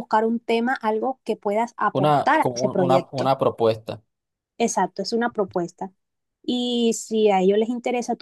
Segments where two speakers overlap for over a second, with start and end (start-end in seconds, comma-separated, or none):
1.9-3.3